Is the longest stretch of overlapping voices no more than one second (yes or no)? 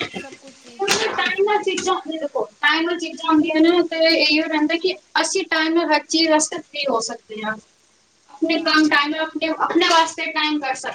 yes